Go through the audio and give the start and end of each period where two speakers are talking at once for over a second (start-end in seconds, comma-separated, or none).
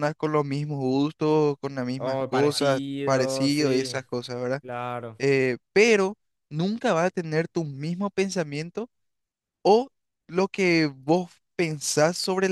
2.0-3.9